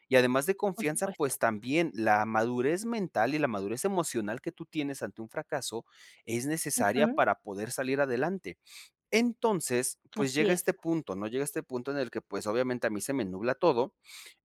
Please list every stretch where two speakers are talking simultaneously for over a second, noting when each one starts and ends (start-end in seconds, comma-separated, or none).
none